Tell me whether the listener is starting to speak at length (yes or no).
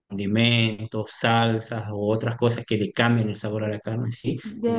no